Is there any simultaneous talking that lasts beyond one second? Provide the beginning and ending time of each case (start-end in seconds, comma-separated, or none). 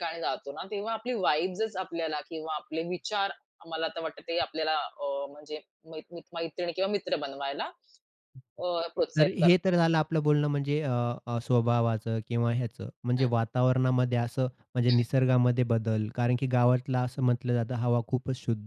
none